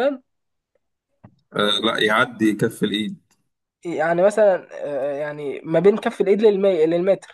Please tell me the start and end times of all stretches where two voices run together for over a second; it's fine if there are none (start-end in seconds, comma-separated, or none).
none